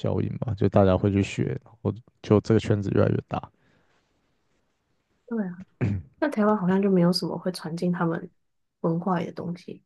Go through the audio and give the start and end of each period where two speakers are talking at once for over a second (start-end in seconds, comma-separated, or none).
none